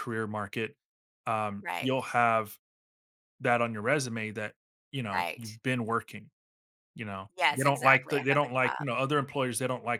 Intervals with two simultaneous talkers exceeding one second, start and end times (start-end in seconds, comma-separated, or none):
7.4-8.8